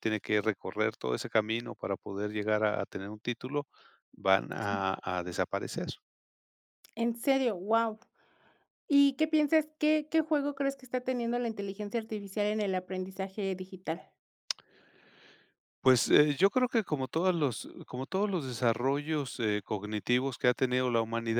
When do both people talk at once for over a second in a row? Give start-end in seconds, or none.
none